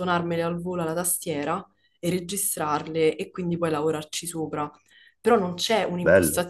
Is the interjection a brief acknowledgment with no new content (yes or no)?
yes